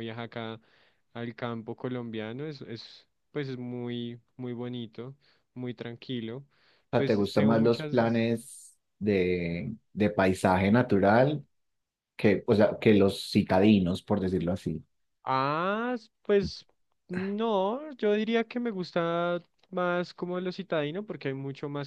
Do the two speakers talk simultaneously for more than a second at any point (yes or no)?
yes